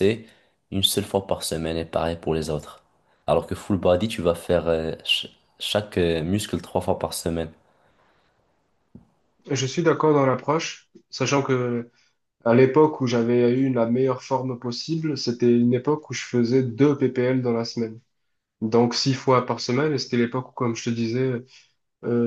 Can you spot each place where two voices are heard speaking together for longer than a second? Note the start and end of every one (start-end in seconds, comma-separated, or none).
none